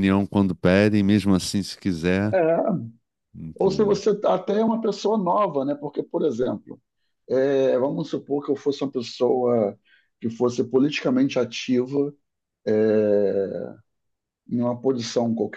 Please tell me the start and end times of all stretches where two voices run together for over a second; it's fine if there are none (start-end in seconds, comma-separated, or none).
none